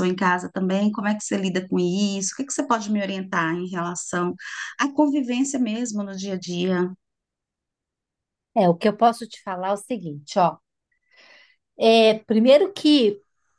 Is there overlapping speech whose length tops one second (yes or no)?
no